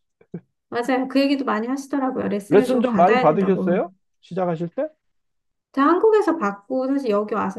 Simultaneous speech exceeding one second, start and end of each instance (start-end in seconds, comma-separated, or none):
2.5-3.8